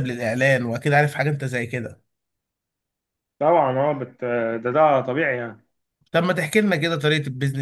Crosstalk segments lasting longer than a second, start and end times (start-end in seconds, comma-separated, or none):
none